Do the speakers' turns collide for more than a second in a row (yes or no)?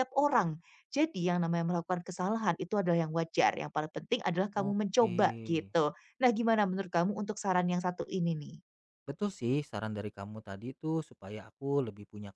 no